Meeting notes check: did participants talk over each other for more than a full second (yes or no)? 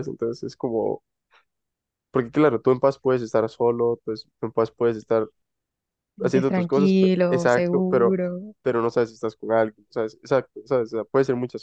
yes